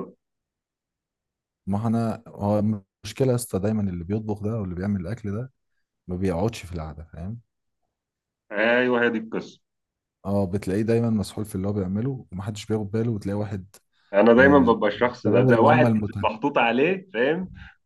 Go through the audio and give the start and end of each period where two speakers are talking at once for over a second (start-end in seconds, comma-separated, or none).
14.4-16.3